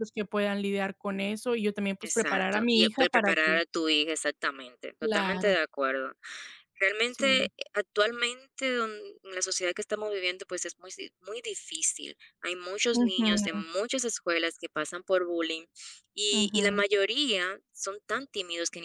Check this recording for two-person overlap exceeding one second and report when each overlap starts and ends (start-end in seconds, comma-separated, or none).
2.0-3.6